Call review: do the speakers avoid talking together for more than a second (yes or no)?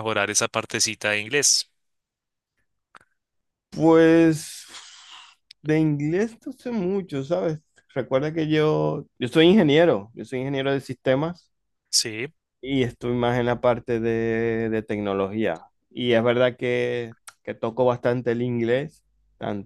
yes